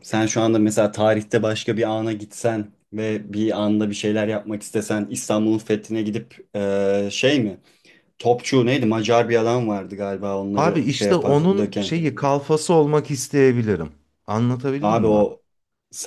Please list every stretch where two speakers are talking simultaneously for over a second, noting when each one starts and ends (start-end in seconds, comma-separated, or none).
10.6-11.9